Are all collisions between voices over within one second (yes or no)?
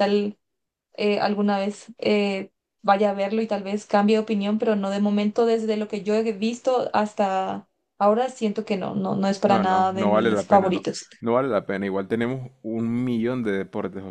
no